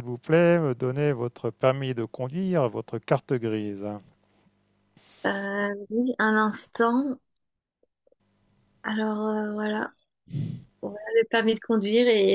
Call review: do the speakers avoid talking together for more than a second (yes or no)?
yes